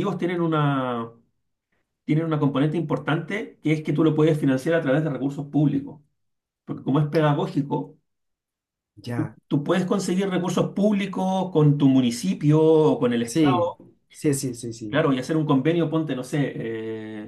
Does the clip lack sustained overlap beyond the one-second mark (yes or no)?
yes